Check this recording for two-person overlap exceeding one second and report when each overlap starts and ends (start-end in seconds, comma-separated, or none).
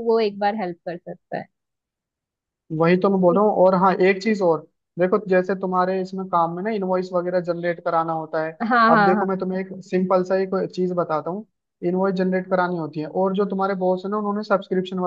none